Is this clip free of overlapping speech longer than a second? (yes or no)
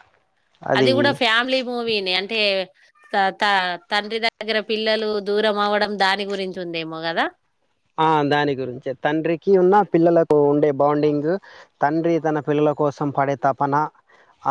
yes